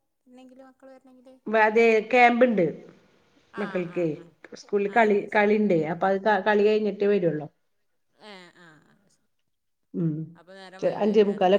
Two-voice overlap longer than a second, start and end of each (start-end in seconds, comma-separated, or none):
none